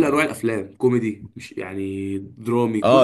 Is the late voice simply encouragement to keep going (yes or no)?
no